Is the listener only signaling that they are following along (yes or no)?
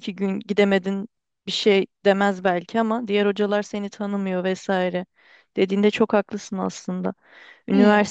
yes